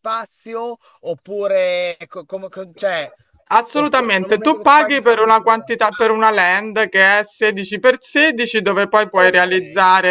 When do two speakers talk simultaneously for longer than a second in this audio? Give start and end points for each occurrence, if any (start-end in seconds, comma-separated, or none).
3.7-6.2